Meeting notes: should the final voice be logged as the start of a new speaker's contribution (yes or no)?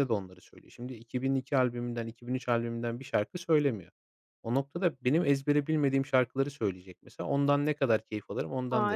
yes